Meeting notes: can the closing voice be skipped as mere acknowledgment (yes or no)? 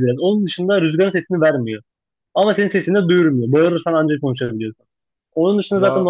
yes